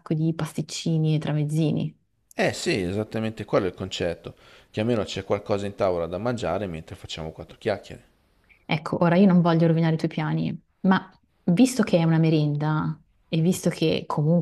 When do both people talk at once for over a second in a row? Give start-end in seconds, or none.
none